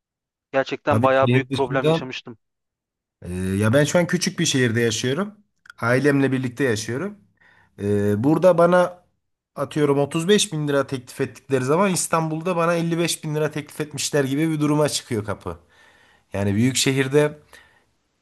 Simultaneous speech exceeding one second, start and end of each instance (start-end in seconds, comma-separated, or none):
0.9-2.2